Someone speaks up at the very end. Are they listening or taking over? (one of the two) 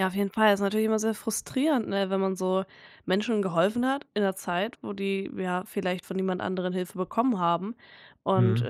listening